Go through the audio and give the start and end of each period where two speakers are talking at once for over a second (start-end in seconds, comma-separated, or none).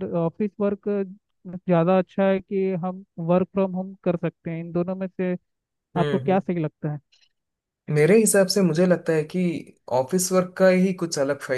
none